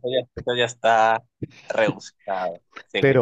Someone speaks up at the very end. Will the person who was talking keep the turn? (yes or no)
no